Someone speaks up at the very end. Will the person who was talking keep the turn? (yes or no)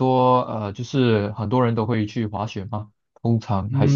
no